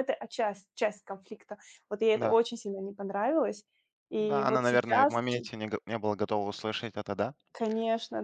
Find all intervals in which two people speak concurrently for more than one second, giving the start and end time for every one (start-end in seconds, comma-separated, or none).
4.2-5.5